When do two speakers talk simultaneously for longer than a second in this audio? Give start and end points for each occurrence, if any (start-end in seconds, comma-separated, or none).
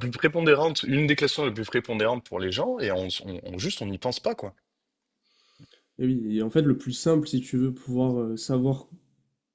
none